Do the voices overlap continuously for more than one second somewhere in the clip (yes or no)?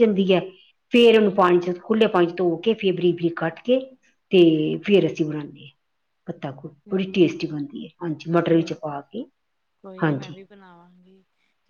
no